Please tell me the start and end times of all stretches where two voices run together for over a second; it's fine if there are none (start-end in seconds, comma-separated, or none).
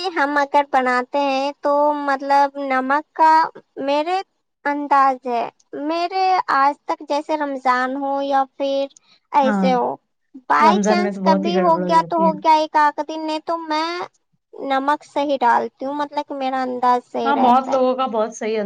10.6-12.3